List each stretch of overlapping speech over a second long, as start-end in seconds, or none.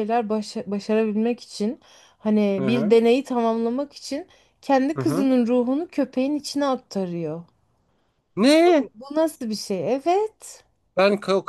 none